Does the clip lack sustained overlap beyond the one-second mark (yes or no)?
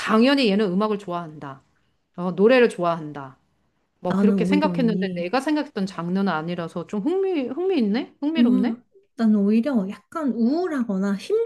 no